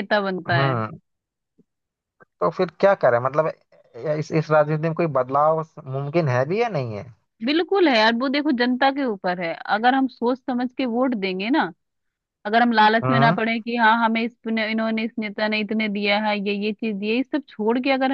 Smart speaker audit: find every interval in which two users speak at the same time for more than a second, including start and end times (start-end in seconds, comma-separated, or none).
none